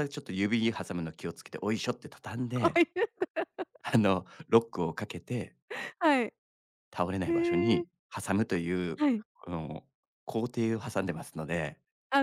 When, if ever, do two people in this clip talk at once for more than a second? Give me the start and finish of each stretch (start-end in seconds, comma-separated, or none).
none